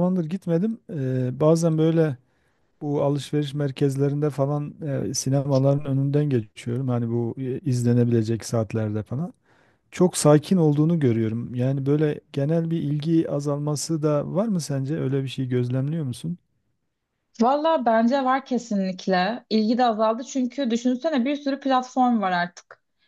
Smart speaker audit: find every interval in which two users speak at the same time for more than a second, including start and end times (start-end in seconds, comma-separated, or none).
none